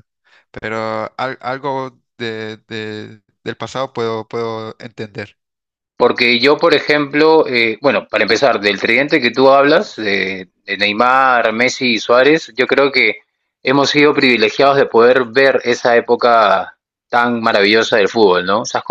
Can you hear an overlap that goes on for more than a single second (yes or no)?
no